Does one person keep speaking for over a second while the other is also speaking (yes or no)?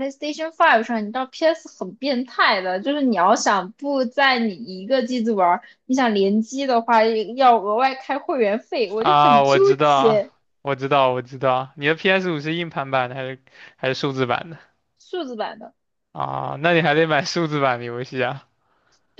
yes